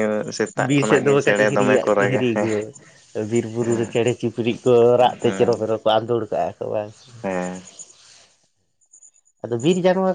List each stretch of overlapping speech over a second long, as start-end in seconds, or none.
0.6-2.3